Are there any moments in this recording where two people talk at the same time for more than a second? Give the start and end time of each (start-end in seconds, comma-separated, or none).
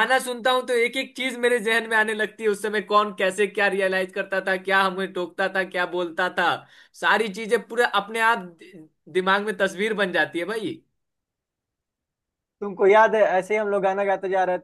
none